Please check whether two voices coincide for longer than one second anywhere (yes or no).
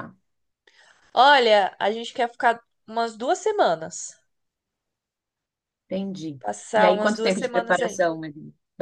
yes